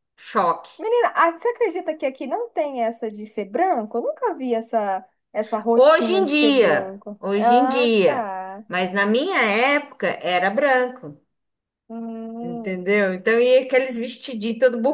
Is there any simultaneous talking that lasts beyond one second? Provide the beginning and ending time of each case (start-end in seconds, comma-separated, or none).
5.7-8.3